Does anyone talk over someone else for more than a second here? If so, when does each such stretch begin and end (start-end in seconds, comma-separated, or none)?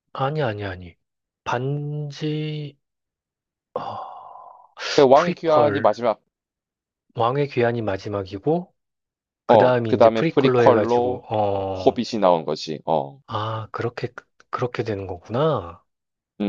9.5-12.0